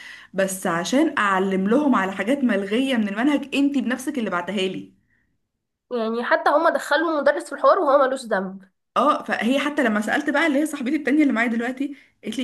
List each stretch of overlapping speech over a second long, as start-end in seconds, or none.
none